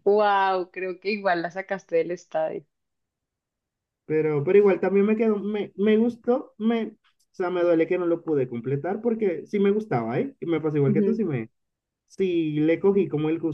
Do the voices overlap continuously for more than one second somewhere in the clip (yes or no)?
no